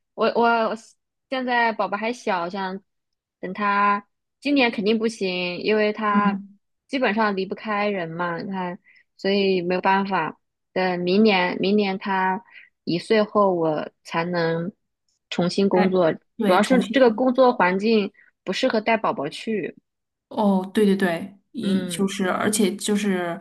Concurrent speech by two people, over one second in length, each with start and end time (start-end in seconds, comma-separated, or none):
15.7-17.3